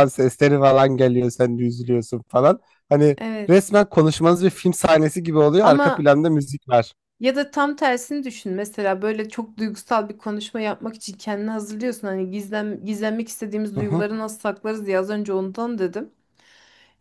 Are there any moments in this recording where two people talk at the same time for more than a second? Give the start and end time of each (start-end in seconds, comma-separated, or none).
none